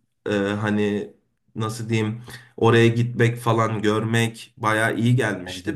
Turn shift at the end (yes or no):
no